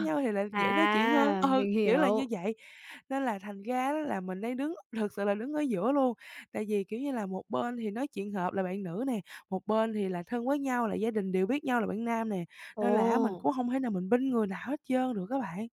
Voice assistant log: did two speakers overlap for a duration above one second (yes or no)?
yes